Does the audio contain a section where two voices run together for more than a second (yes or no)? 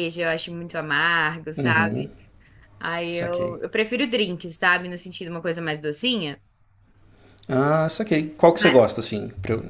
no